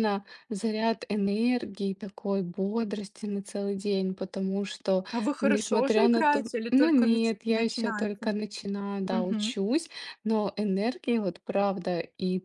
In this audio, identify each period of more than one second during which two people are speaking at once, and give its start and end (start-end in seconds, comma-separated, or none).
5.4-8.3